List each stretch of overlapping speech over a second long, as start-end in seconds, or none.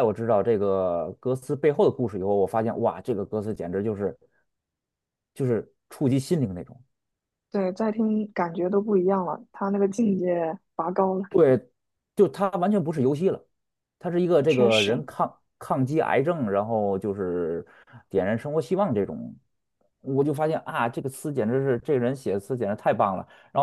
none